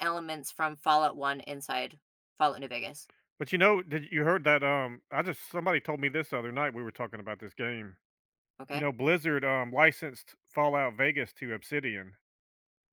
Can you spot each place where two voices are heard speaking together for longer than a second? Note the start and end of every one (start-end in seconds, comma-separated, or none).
none